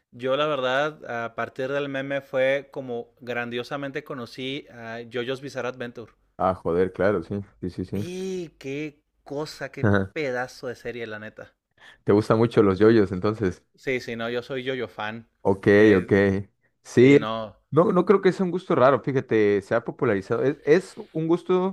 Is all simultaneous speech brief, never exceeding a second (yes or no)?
yes